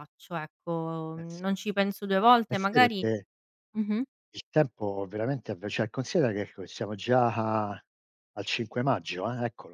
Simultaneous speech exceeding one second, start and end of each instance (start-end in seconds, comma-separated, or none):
none